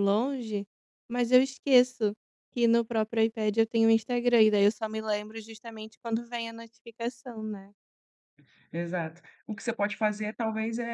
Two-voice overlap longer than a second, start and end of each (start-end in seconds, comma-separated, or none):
none